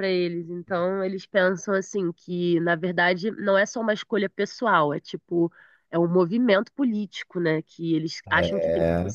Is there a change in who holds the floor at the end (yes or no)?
no